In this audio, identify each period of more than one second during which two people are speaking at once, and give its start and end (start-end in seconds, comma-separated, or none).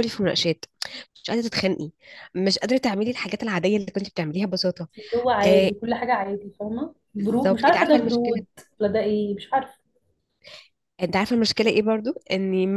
7.2-8.4